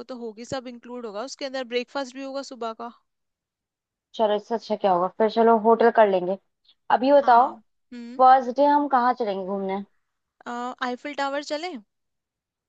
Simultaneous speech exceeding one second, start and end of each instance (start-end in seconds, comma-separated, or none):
none